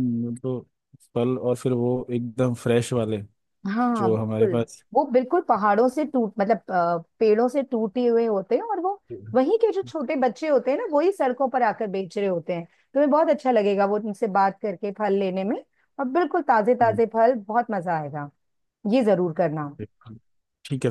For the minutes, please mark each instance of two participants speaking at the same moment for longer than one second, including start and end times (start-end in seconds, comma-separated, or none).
none